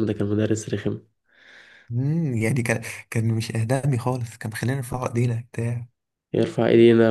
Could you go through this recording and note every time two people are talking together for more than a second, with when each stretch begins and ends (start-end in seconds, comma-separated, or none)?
none